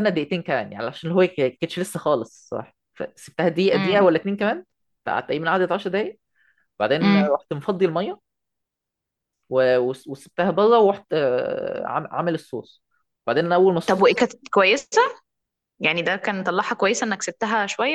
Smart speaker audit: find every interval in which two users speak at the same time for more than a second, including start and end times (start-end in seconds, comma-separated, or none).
none